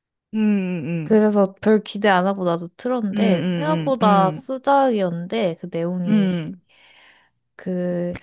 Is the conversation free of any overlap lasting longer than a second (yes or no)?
no